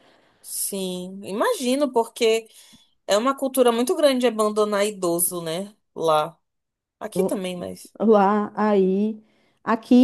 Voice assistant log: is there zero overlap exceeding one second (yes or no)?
yes